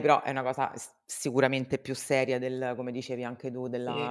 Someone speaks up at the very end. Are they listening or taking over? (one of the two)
taking over